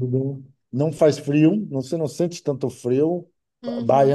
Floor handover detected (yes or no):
no